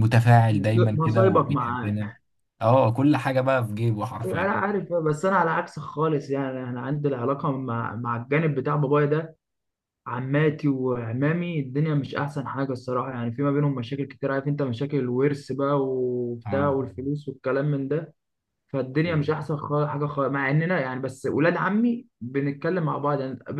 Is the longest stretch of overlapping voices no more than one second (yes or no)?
no